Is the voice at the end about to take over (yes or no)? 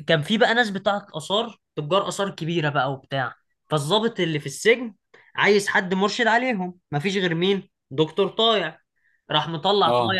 no